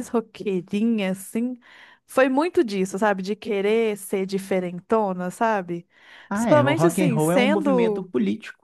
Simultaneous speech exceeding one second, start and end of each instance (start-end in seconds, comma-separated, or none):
6.3-8.1